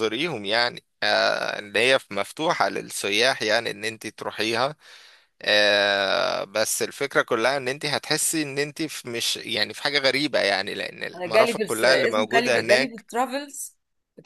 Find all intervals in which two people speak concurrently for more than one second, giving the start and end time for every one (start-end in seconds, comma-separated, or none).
11.1-13.1